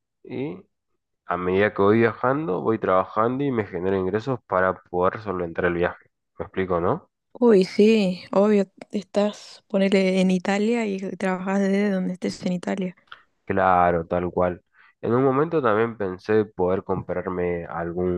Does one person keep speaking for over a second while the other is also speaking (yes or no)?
no